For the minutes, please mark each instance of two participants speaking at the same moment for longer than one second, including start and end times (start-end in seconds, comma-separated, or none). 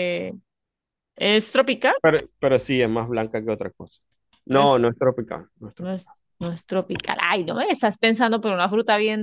none